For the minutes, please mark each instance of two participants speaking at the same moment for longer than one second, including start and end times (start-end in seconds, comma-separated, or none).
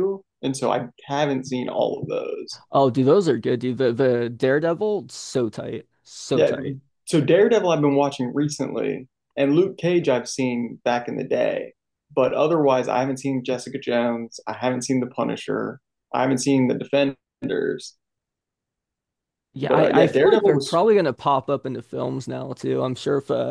19.6-20.8